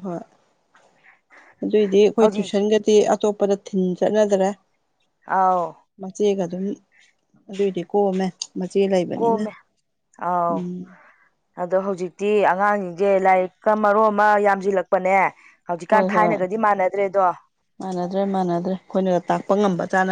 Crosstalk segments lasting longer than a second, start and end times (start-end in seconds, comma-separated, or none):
none